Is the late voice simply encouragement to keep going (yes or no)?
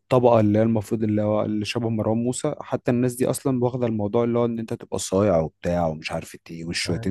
no